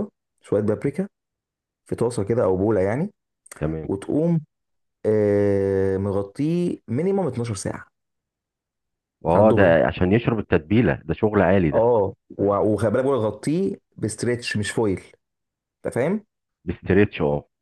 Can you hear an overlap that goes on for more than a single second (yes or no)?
no